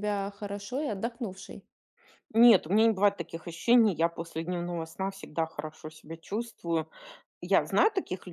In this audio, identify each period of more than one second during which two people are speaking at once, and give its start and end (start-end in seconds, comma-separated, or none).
none